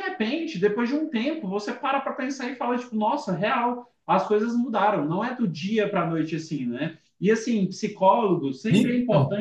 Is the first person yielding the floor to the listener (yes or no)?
no